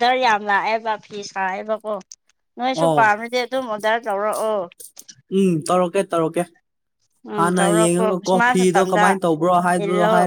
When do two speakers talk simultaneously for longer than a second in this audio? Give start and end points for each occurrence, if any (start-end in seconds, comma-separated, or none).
7.4-9.1